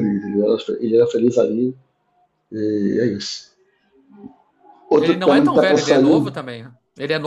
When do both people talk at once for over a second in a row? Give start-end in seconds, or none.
5.0-6.3